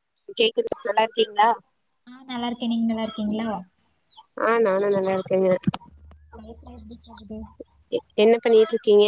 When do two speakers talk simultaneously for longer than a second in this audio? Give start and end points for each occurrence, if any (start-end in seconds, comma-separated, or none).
none